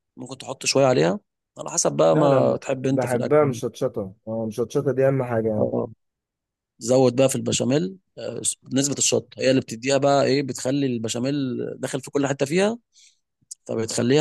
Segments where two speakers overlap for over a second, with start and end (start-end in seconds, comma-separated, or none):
2.1-3.4